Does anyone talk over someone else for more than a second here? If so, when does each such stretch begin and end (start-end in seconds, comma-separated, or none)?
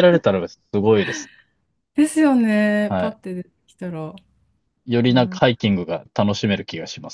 none